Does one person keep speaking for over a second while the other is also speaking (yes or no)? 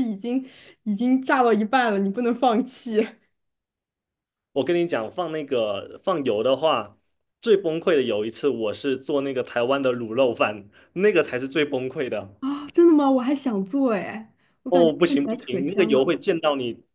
yes